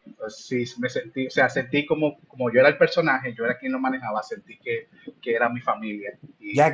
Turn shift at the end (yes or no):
yes